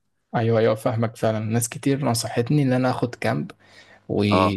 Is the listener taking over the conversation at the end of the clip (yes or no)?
no